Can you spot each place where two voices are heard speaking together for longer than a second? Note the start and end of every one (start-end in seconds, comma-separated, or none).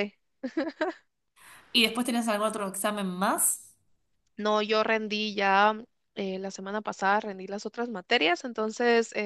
none